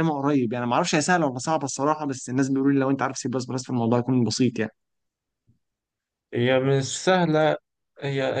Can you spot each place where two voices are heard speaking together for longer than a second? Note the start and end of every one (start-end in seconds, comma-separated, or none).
none